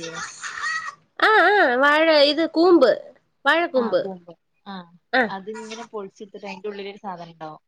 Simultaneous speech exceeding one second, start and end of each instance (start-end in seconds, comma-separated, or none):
none